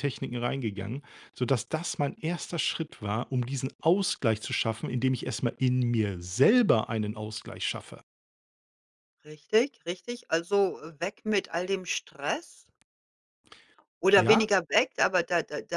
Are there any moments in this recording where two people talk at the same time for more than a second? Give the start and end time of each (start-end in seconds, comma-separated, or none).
none